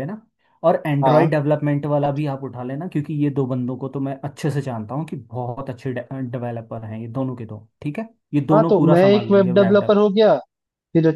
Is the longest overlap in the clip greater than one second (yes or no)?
yes